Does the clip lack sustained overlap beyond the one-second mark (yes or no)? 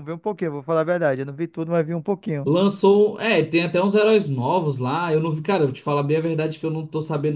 yes